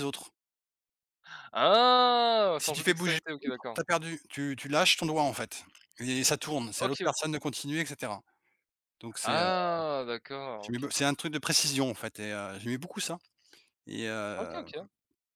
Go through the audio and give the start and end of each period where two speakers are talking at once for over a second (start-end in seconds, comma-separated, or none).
2.6-3.8